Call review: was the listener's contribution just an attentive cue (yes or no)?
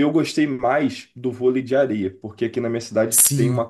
yes